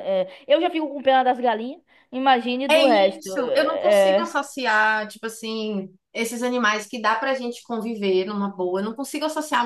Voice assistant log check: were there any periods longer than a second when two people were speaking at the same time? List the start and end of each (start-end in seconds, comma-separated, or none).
2.7-4.3